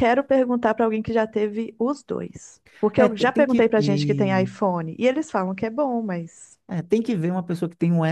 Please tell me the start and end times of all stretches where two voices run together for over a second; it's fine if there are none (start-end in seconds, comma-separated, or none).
3.0-4.5